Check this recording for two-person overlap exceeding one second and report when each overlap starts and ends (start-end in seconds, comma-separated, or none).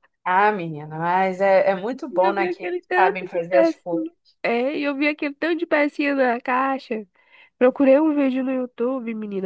2.1-4.1